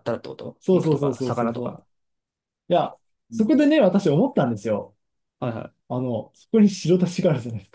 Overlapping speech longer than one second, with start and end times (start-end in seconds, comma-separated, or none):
0.6-1.8